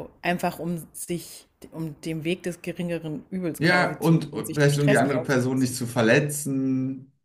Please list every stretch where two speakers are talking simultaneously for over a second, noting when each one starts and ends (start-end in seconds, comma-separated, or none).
3.6-5.8